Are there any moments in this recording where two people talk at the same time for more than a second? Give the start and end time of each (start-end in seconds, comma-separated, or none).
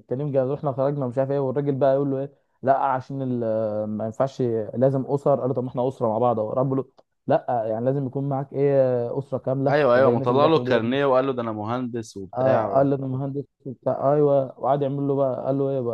9.7-11.0